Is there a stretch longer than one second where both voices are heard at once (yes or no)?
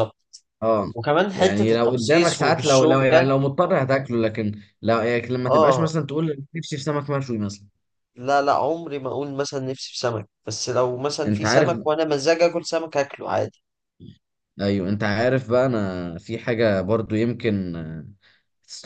yes